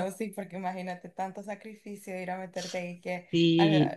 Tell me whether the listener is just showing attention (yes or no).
yes